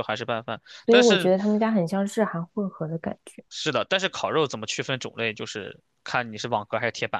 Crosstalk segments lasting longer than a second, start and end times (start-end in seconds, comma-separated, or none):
none